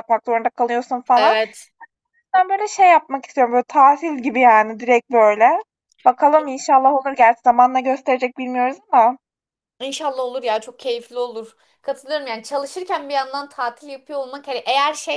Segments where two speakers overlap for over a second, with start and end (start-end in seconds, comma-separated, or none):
none